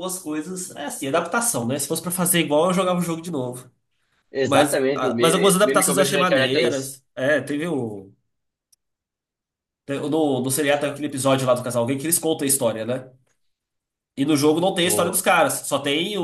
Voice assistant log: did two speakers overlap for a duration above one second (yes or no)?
yes